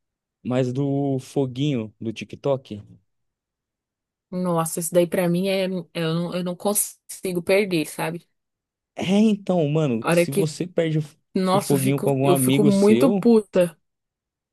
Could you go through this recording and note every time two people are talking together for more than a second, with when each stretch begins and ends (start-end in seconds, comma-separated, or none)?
11.3-13.3